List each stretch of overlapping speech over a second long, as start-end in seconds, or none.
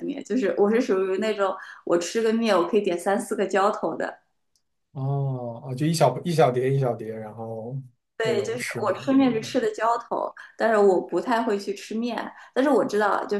8.2-9.6